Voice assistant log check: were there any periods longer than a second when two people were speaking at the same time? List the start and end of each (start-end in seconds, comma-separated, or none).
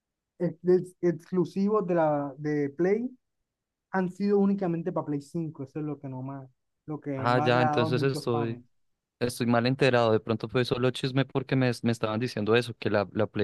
7.2-8.6